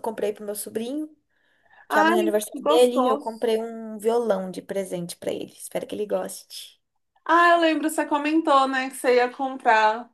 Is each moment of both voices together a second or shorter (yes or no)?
no